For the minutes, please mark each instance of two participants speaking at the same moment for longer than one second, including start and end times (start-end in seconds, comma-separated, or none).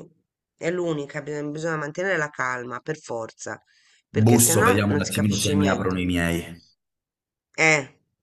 4.2-6.0